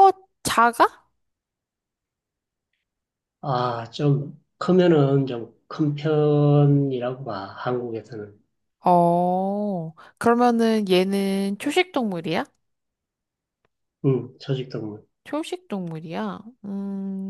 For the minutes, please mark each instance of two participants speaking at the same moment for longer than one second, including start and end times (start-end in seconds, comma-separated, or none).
none